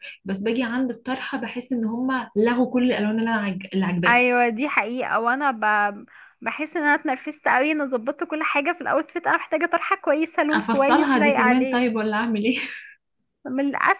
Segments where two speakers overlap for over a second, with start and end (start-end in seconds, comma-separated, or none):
10.5-11.9